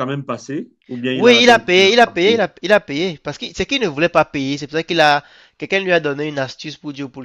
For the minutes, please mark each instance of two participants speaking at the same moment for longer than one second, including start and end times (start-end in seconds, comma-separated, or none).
1.1-2.5